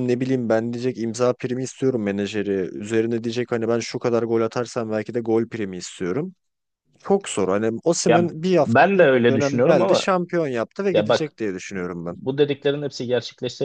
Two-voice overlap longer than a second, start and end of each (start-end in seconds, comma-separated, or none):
8.1-10.1